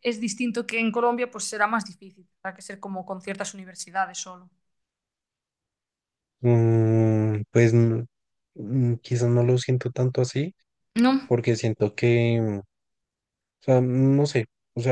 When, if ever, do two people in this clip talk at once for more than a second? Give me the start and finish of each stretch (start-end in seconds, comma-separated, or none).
none